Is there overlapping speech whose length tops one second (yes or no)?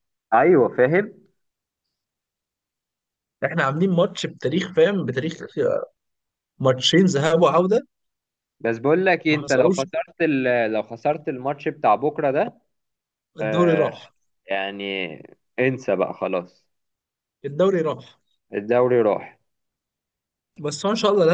no